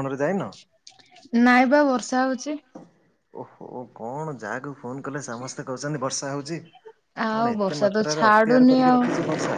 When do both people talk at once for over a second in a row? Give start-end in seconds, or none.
7.3-9.0